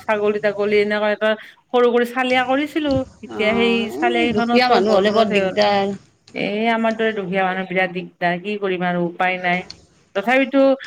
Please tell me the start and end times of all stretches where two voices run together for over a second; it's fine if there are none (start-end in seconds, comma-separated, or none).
3.4-5.4